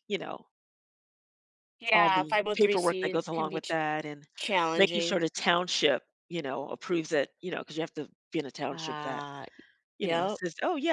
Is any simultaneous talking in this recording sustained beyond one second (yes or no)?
yes